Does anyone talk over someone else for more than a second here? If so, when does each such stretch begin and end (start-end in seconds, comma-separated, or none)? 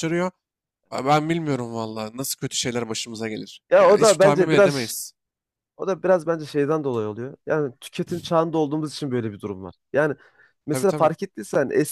3.7-5.0